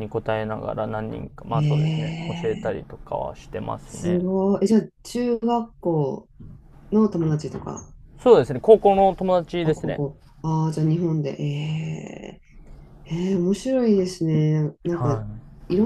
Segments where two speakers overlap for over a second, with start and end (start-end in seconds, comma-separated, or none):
1.5-3.0